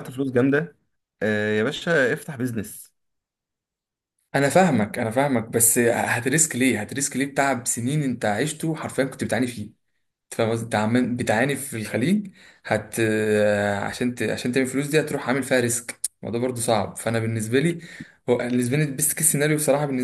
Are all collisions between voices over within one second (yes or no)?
yes